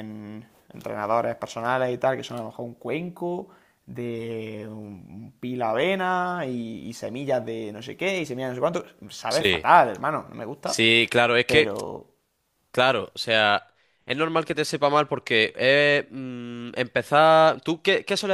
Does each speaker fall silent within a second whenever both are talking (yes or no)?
yes